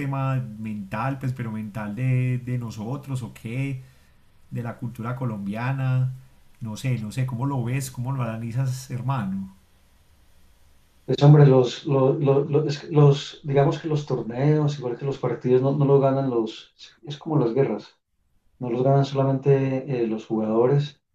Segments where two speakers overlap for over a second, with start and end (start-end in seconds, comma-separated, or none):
none